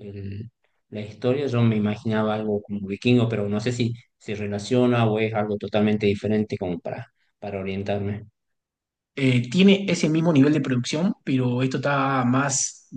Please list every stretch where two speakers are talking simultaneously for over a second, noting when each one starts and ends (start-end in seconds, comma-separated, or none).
none